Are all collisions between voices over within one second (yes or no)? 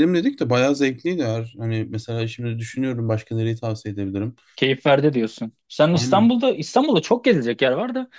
yes